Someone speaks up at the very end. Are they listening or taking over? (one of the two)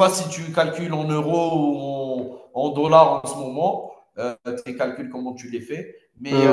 listening